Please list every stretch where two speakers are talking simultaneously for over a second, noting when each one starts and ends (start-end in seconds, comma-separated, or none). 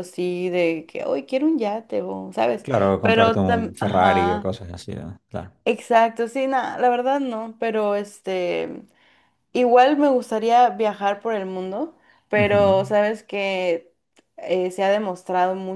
2.6-4.5